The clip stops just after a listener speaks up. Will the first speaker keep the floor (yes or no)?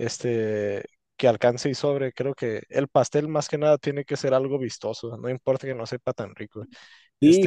no